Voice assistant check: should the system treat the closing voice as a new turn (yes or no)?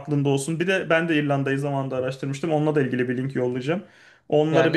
yes